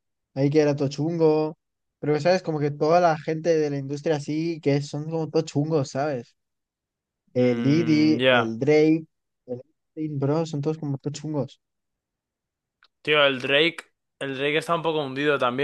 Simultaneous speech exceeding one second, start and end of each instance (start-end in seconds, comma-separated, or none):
7.3-8.6